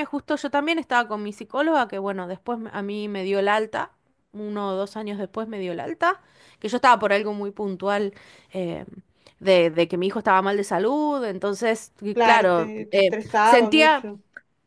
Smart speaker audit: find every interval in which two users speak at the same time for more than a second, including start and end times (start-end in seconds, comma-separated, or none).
12.1-14.1